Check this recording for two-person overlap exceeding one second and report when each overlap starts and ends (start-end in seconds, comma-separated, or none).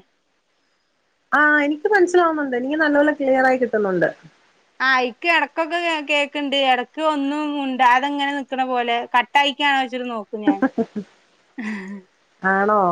none